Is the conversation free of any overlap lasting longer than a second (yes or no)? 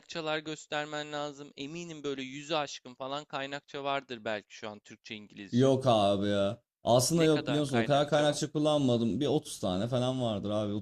no